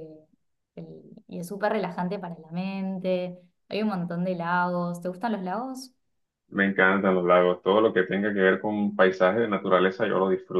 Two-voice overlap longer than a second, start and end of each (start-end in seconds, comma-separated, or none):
none